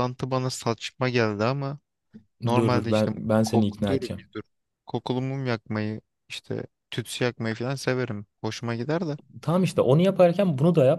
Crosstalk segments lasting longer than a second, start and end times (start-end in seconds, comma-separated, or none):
2.5-4.2